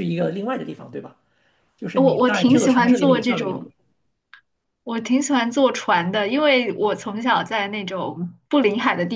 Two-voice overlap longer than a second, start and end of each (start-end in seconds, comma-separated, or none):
1.9-3.7